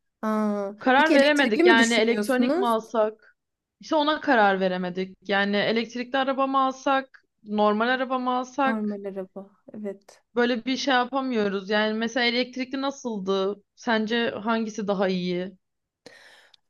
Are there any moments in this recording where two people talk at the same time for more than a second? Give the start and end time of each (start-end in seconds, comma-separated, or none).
0.8-2.7